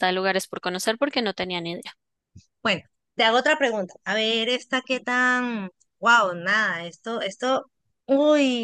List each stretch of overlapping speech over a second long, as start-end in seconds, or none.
none